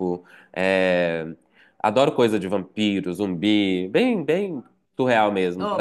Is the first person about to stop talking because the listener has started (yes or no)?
yes